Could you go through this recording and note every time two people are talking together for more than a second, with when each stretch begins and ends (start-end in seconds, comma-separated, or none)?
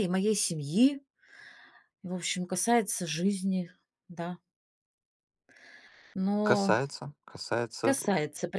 none